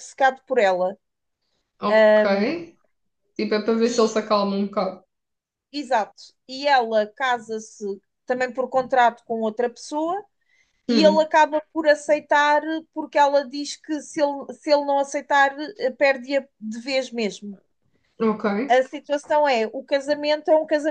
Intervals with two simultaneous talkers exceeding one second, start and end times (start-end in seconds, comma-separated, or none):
none